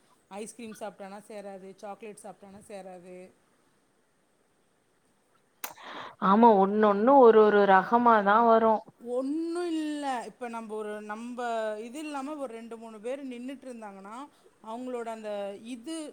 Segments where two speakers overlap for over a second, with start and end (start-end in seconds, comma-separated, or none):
none